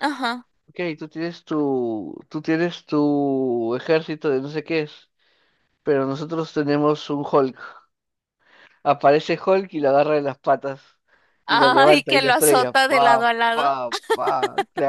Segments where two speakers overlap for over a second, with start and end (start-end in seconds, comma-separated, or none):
11.5-13.7